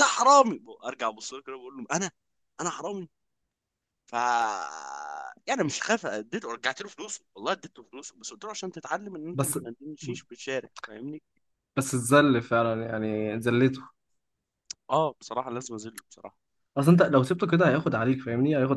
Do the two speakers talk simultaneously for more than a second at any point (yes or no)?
no